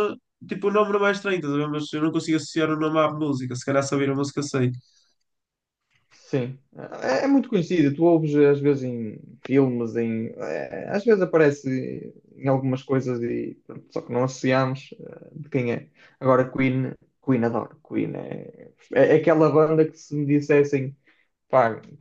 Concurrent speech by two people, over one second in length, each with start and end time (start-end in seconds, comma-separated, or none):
none